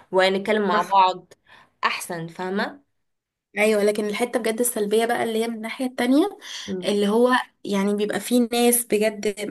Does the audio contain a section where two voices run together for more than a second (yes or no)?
no